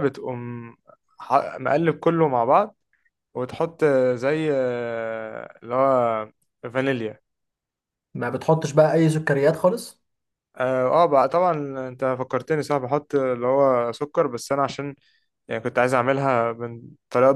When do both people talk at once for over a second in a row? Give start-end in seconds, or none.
none